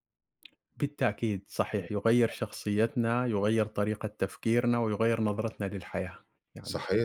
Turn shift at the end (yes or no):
yes